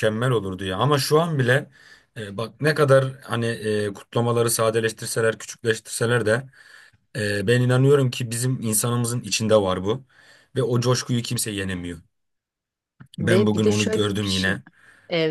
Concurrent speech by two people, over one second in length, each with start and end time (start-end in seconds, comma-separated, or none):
13.2-14.6